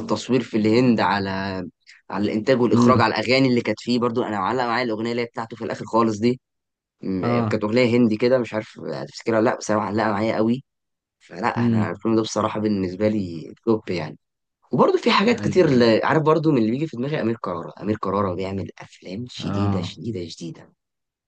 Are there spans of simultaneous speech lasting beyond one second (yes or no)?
no